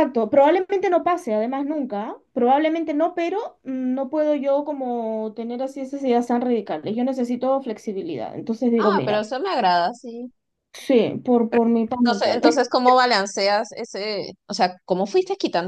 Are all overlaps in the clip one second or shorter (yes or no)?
yes